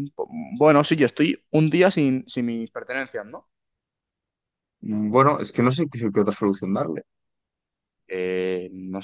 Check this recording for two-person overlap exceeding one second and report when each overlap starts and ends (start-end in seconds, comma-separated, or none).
none